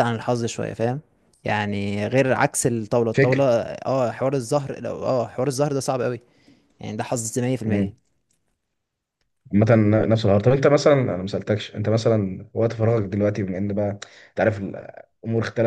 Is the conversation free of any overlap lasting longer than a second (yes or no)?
yes